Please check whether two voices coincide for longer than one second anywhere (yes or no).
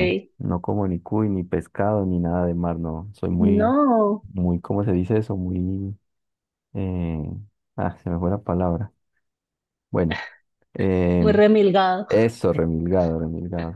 no